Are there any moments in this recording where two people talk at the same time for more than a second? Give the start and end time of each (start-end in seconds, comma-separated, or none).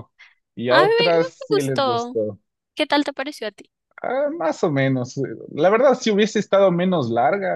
0.7-2.2